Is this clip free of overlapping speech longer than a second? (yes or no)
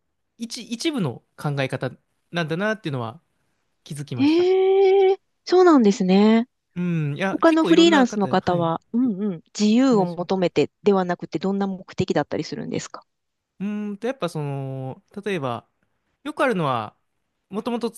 no